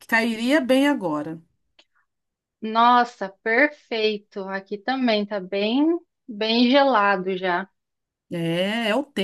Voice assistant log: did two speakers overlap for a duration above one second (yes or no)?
no